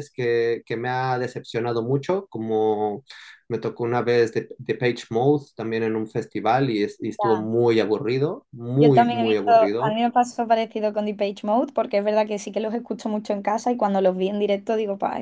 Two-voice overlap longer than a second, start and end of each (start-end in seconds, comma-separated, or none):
8.8-10.0